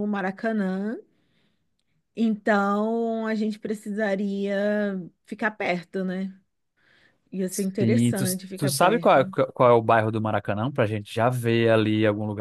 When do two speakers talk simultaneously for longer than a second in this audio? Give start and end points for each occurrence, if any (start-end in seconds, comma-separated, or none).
7.8-9.3